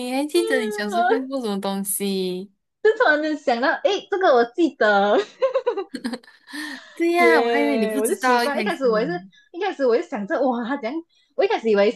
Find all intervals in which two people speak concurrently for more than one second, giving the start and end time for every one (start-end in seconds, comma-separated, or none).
7.2-8.8